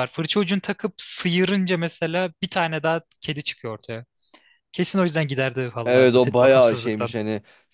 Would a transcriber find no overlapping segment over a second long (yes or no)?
no